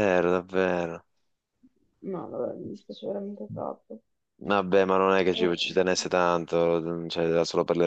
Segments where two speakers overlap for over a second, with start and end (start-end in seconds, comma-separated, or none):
none